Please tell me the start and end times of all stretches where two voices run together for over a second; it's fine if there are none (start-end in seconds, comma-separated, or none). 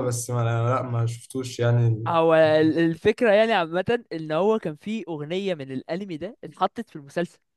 none